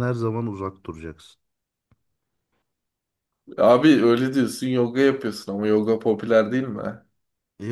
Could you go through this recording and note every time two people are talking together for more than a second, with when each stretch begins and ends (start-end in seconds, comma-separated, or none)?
none